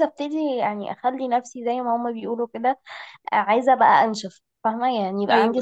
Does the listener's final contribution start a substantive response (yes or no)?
no